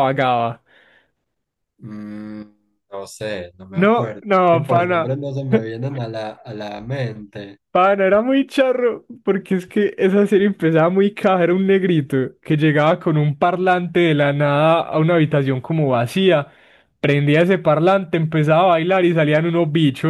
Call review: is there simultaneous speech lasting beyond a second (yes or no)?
yes